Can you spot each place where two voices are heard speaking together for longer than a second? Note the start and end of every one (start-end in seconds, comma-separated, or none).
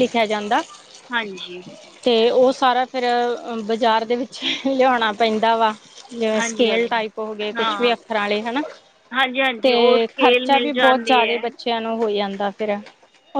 9.6-11.4